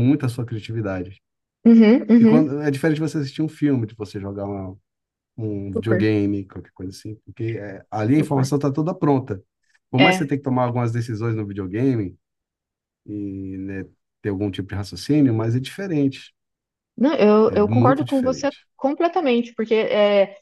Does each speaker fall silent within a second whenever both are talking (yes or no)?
no